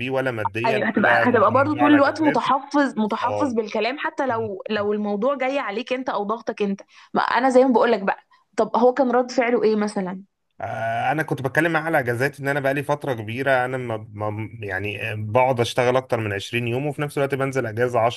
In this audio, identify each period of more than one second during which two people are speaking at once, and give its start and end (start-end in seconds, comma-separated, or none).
0.7-2.6